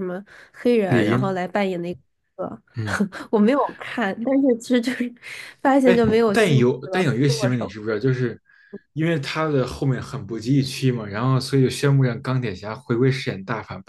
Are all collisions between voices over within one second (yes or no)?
no